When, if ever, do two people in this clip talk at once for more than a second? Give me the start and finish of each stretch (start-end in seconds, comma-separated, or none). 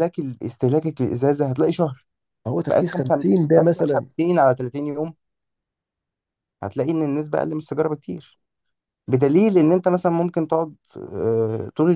2.6-4.0